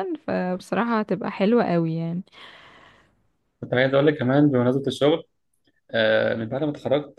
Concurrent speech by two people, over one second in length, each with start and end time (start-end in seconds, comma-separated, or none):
none